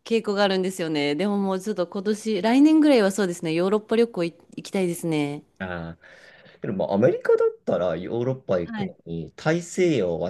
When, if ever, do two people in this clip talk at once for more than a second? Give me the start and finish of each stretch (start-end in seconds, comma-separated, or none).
none